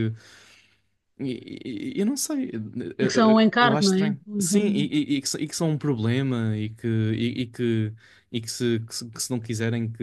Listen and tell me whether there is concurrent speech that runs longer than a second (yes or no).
yes